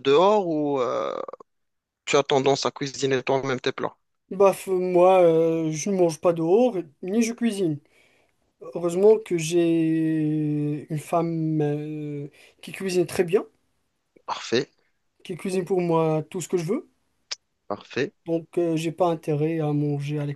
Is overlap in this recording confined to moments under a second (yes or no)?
yes